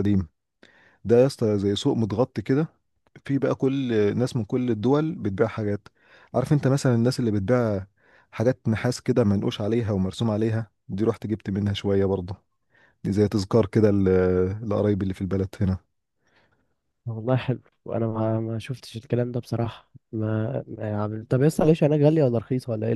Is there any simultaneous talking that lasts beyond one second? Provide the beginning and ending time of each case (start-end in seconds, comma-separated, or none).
none